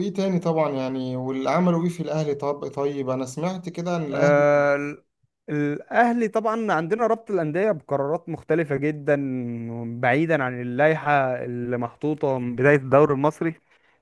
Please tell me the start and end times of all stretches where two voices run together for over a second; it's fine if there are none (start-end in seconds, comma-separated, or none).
none